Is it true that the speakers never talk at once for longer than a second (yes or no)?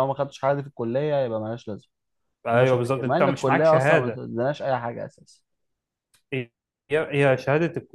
no